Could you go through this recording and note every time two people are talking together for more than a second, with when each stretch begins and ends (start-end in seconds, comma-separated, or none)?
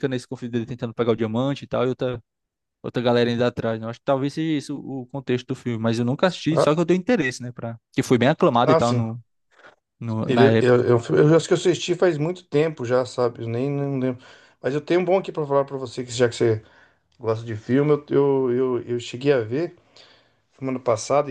none